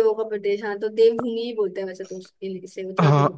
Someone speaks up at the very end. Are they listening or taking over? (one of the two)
taking over